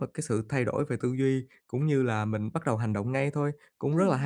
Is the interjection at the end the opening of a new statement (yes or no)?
no